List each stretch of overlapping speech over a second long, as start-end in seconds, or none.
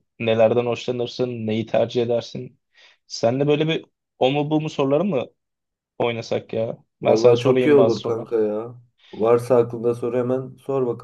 7.1-8.4